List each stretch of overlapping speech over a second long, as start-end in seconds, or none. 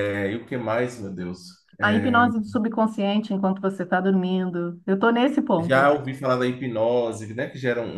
none